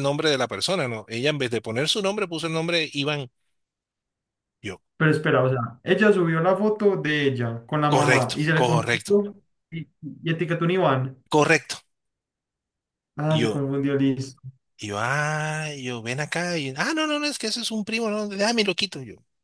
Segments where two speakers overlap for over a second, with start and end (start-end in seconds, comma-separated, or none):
7.9-9.2